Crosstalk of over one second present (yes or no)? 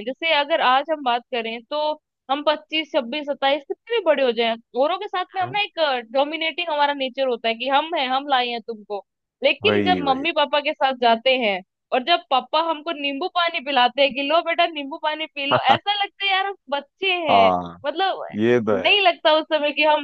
no